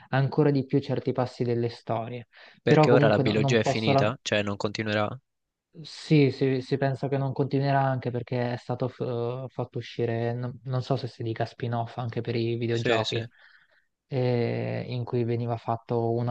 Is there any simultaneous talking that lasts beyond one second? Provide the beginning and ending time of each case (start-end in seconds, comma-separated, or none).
2.6-4.1